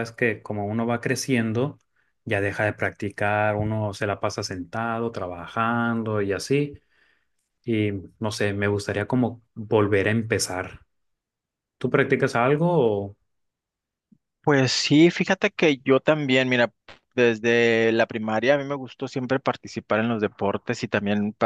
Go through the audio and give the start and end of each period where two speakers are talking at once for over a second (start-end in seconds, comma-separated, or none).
none